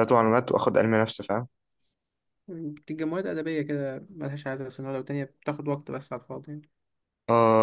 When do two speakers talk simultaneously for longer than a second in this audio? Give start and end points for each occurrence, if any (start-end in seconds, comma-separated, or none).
none